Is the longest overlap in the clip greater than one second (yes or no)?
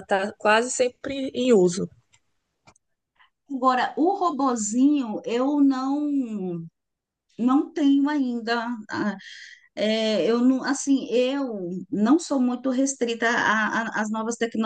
no